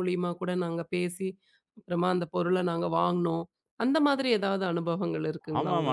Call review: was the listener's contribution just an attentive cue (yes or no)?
no